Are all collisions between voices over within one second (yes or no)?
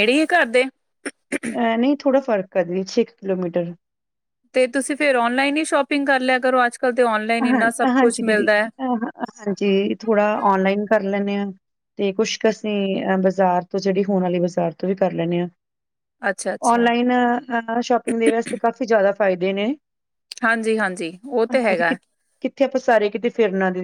yes